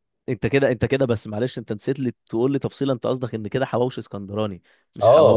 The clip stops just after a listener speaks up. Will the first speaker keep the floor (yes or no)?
no